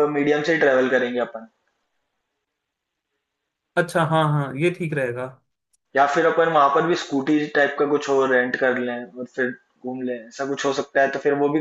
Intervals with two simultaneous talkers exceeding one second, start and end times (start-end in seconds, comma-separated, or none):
none